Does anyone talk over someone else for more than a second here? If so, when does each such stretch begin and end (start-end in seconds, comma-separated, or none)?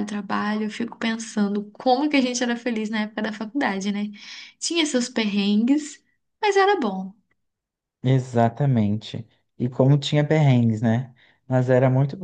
none